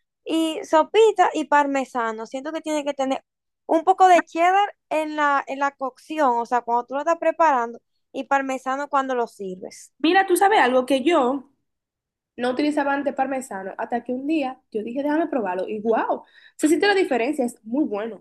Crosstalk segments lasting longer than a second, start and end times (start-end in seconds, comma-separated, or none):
none